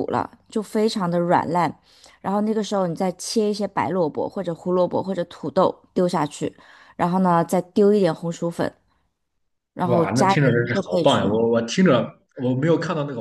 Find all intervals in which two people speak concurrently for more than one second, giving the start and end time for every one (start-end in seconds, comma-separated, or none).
9.9-11.4